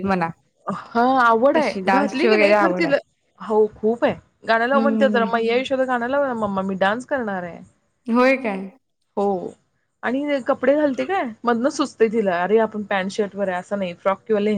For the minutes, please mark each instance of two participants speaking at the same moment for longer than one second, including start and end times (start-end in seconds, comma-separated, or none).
1.6-3.0